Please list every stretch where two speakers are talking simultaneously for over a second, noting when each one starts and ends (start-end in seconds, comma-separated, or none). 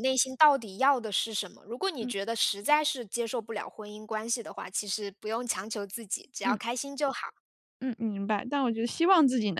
none